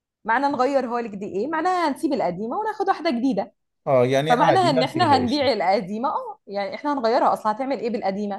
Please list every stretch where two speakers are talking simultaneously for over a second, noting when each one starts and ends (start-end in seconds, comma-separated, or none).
4.2-5.5